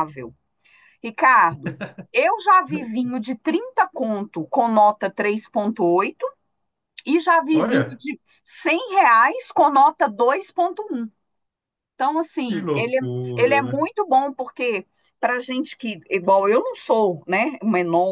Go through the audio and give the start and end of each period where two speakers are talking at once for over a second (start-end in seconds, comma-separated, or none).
12.5-13.9